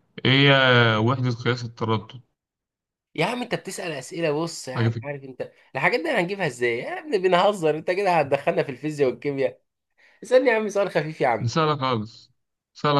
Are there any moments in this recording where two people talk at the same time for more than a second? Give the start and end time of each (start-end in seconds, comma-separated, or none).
none